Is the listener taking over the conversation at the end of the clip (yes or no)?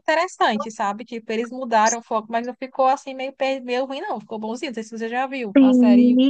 yes